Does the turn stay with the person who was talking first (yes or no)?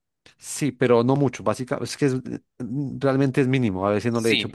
no